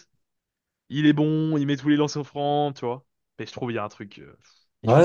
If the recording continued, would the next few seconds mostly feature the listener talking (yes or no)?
yes